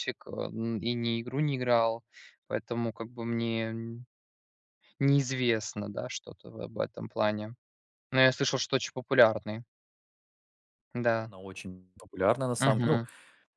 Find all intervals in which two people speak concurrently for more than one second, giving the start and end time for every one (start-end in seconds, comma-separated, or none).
none